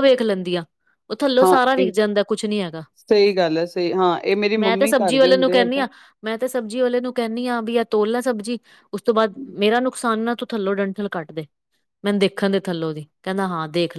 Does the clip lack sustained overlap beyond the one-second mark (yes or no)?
no